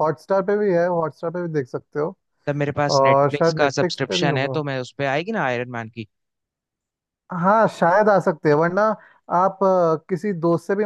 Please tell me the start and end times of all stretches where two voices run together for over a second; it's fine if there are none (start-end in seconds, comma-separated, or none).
3.0-4.6